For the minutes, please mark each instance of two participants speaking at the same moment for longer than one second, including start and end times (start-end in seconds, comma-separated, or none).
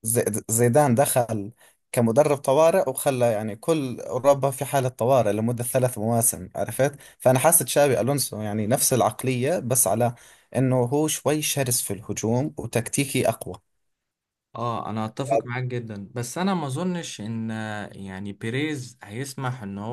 none